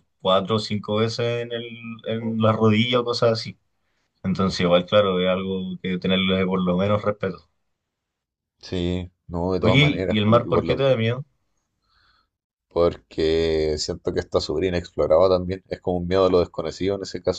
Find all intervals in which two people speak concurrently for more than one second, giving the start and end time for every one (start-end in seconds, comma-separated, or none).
9.6-10.9